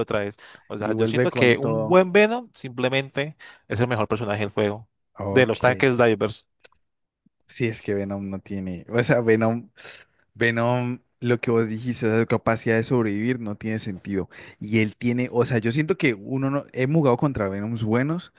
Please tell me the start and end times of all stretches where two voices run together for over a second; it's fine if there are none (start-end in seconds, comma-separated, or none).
0.8-2.0